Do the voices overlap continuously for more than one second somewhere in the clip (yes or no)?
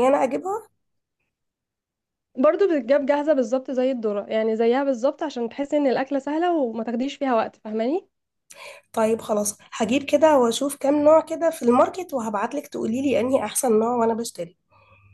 no